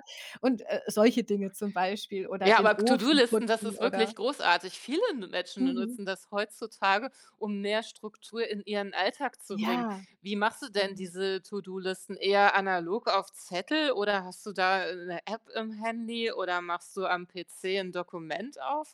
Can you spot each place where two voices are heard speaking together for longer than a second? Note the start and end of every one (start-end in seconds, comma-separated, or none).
2.4-4.1